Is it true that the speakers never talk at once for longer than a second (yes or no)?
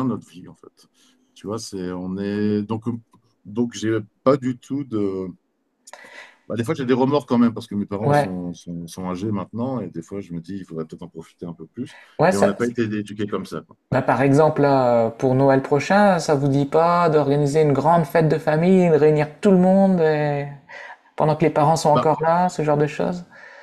yes